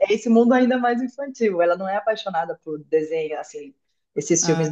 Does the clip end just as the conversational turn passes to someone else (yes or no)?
no